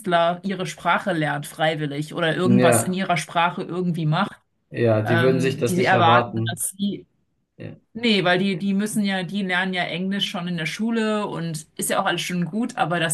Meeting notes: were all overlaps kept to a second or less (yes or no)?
no